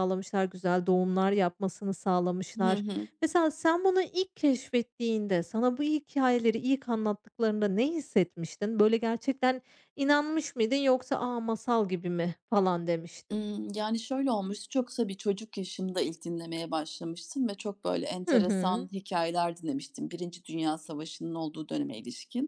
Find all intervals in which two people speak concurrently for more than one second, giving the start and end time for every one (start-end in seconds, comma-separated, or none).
none